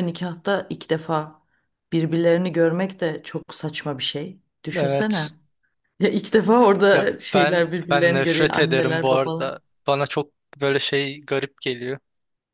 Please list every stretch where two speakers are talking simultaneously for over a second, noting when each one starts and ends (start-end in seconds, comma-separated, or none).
6.9-9.5